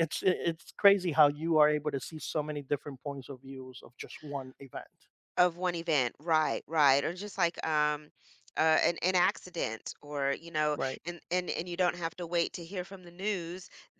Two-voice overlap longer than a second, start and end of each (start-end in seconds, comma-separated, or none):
none